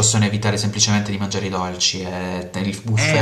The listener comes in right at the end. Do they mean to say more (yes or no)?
yes